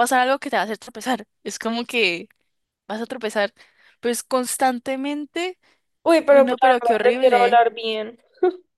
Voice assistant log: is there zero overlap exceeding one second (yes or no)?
no